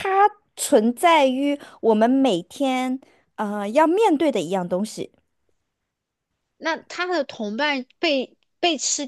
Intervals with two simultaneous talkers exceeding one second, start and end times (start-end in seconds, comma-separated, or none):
none